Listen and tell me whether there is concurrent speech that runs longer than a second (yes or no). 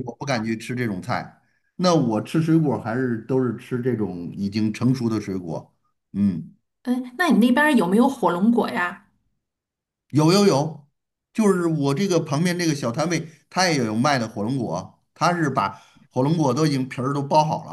no